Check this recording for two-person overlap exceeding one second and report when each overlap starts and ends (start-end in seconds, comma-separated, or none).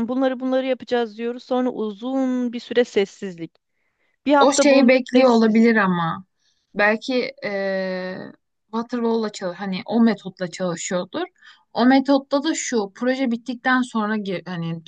4.4-5.7